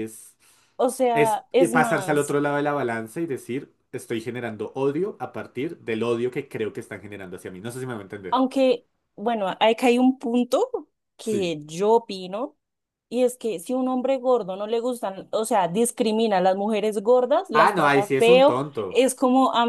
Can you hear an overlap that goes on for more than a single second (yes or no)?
yes